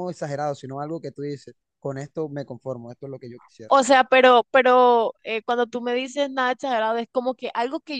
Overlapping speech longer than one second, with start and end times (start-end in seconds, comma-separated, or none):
none